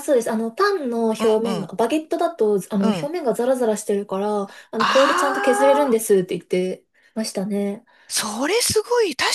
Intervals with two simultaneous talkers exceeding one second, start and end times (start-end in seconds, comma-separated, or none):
4.8-6.0